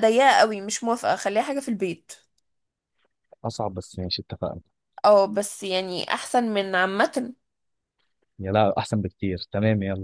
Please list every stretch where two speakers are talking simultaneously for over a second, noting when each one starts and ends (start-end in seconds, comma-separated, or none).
none